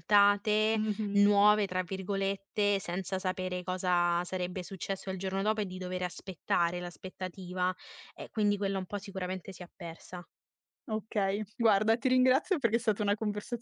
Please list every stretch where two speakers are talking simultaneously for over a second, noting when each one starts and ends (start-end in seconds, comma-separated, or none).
none